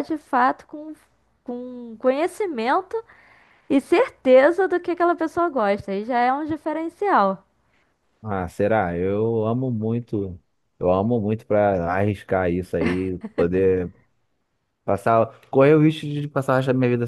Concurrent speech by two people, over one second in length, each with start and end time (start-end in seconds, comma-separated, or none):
none